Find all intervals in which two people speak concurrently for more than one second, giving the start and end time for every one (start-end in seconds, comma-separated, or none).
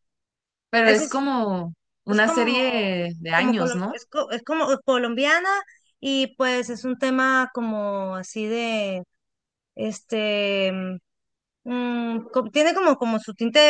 2.1-3.9